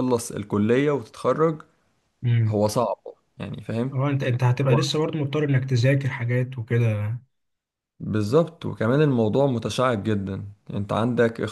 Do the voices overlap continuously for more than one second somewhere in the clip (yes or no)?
no